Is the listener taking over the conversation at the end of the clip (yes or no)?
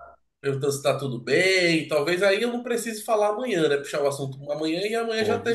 yes